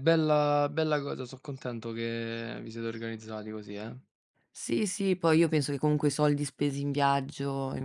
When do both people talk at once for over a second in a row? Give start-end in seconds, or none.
none